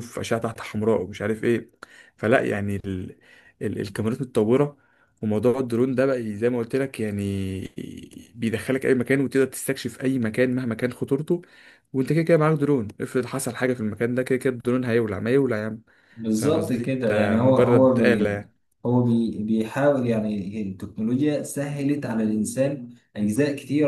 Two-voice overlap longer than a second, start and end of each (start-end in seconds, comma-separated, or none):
16.3-18.3